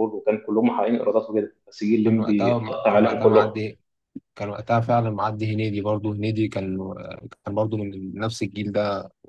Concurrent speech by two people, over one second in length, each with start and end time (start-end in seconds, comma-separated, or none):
2.0-3.5